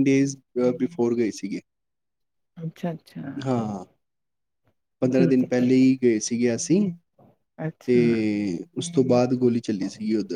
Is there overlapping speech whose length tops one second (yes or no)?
yes